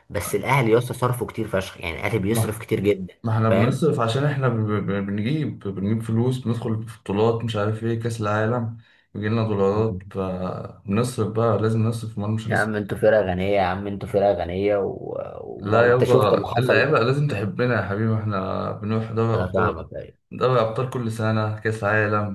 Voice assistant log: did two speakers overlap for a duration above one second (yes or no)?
yes